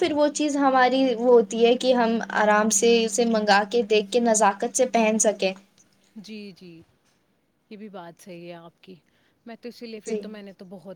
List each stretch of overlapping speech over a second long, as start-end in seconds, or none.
none